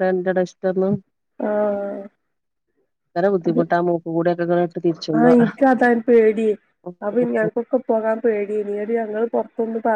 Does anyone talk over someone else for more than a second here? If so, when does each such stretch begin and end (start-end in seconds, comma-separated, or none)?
none